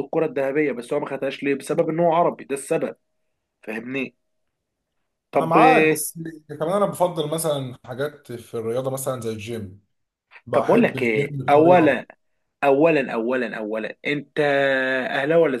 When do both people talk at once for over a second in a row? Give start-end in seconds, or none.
10.5-12.0